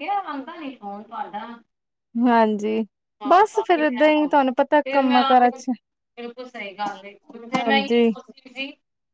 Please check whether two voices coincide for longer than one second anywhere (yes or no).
yes